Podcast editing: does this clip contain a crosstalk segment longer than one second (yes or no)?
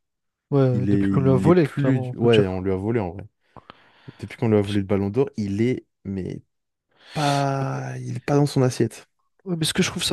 yes